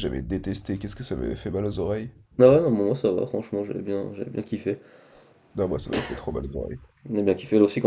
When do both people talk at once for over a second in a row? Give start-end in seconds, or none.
none